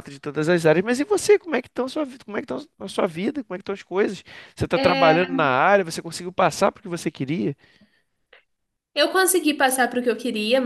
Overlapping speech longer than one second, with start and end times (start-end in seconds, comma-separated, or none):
none